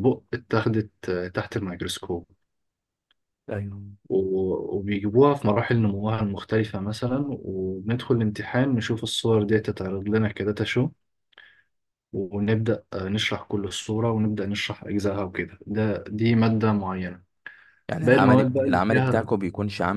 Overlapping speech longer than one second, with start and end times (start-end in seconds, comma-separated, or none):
18.0-19.3